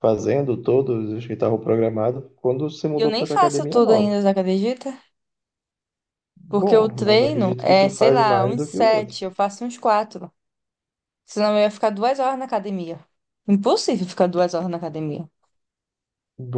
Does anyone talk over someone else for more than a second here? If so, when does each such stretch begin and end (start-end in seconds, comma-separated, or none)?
3.0-4.2, 6.5-9.2